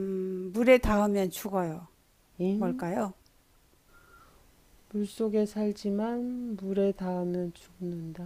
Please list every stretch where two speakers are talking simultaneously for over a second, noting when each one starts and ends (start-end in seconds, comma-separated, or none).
none